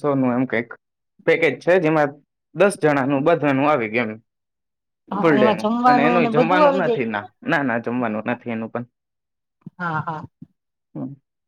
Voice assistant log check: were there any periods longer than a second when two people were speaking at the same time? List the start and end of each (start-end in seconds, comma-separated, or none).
5.2-7.1